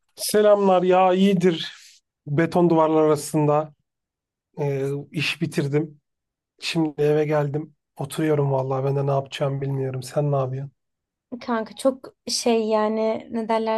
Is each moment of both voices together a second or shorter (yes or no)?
yes